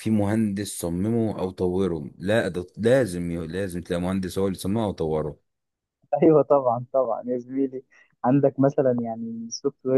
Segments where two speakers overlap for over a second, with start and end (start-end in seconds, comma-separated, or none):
none